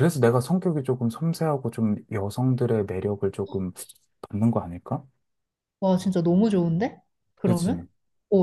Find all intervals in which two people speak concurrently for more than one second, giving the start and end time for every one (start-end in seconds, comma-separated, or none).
none